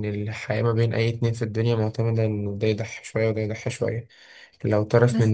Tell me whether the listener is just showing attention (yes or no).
yes